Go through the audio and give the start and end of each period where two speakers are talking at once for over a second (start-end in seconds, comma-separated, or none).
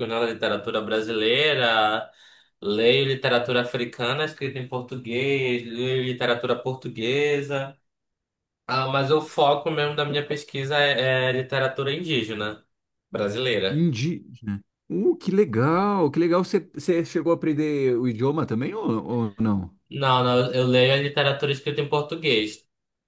none